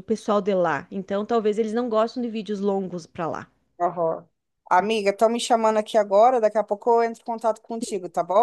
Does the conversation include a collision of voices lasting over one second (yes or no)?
no